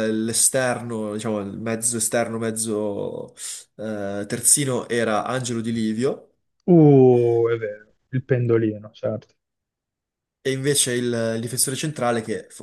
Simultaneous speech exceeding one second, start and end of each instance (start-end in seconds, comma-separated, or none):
none